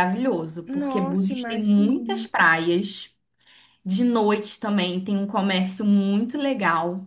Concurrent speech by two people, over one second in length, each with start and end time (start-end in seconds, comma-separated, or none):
0.7-2.3